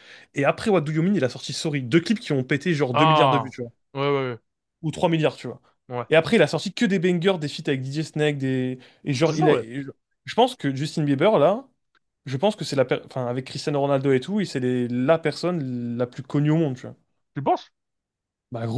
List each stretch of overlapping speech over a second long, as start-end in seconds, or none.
none